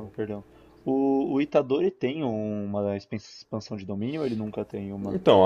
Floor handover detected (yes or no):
yes